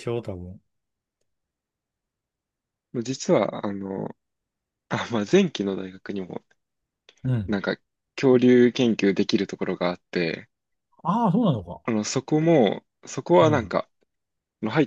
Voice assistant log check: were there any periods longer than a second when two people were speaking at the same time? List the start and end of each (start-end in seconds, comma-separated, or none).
none